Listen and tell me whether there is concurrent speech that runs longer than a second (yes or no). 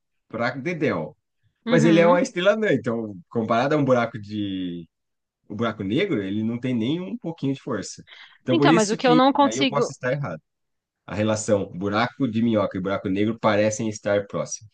yes